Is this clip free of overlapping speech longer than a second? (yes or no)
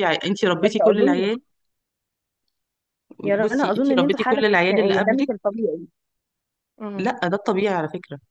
no